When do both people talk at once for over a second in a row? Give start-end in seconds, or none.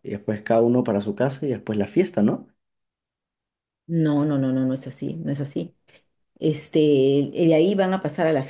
none